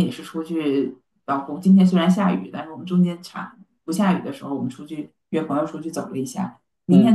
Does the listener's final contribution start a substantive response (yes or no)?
no